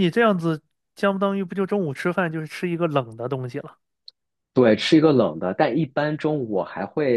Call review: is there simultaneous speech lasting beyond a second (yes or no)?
no